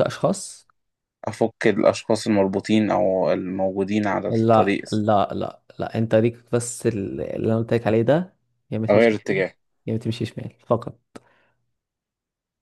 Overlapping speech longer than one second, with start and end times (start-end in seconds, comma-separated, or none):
none